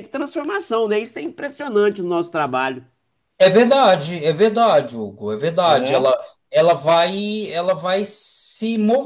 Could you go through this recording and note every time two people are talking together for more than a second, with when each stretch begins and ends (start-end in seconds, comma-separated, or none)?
none